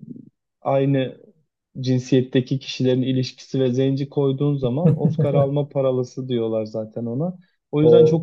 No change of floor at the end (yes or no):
yes